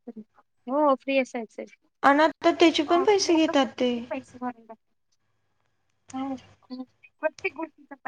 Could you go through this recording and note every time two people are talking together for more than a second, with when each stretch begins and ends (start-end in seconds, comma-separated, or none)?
none